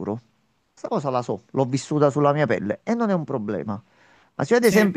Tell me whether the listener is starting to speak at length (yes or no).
no